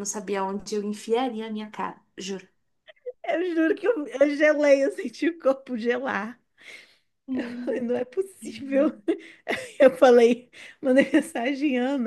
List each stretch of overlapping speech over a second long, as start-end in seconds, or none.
none